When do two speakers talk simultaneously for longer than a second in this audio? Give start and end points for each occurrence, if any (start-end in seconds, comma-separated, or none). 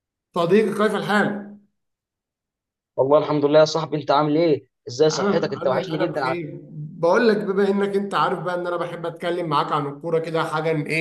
5.1-6.5